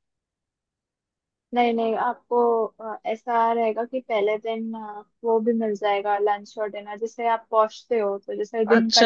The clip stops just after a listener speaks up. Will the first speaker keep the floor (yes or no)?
no